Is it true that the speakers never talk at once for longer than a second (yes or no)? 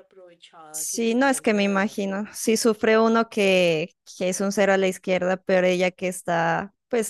no